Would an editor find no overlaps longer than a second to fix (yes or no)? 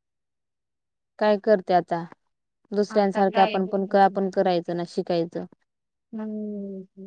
no